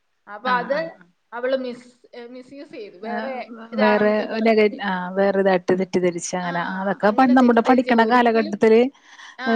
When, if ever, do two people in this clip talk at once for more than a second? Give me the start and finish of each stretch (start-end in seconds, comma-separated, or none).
6.5-8.5